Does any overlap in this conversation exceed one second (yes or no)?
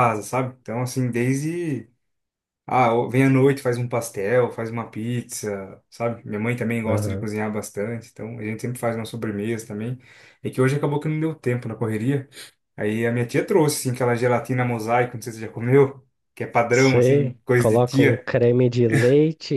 yes